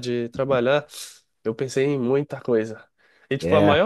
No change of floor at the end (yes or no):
yes